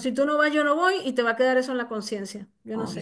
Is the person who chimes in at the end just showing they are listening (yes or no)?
no